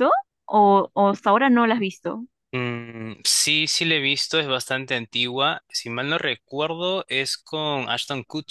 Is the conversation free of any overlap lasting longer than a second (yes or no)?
yes